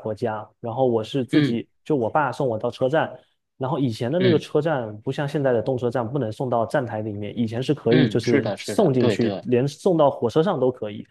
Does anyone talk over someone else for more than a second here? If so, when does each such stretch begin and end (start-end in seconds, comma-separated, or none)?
7.9-9.5